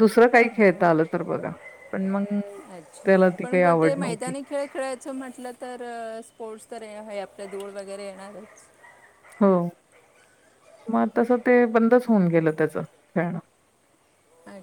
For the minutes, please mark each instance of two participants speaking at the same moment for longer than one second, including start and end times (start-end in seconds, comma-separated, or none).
3.0-4.3